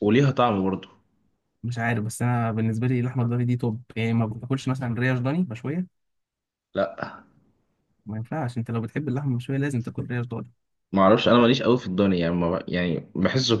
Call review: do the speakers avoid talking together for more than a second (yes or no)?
yes